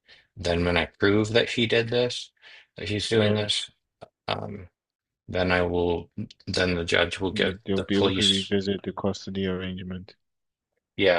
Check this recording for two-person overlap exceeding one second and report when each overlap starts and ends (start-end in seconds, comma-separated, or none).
7.3-8.5